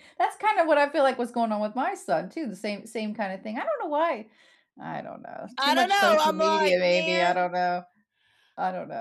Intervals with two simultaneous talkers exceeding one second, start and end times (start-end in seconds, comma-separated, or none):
5.6-7.4